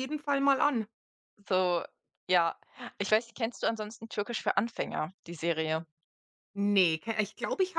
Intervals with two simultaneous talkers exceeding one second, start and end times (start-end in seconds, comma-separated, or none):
none